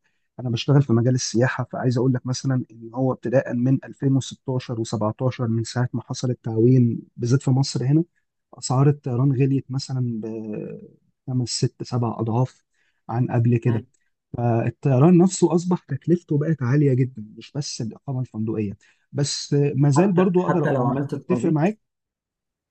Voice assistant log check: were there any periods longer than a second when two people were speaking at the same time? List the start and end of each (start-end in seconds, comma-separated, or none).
19.9-21.7